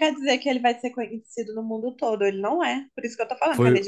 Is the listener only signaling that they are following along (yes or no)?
no